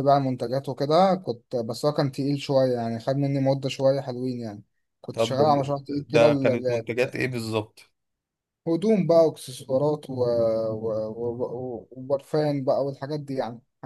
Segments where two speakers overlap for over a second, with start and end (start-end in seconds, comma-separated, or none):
5.1-6.9